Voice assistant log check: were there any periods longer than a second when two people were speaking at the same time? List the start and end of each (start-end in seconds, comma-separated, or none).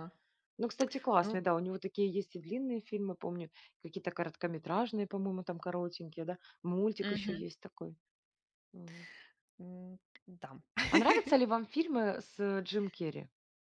none